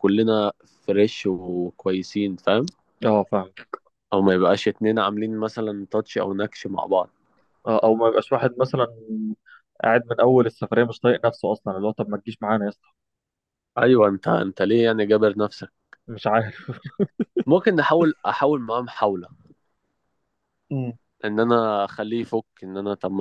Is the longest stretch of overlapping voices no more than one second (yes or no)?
yes